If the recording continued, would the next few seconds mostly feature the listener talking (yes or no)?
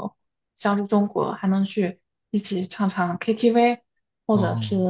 no